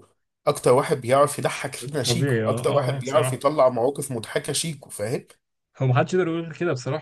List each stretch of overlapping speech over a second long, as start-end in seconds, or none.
2.0-3.5